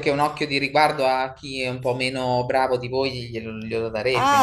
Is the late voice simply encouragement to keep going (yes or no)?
no